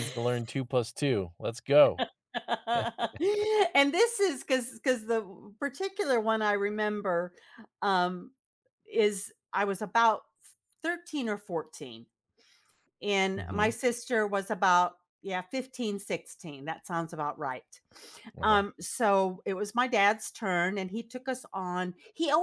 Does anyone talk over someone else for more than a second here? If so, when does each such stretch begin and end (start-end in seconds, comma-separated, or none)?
none